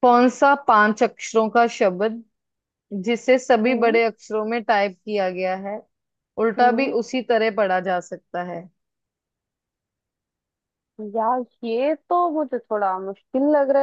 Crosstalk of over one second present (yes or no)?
no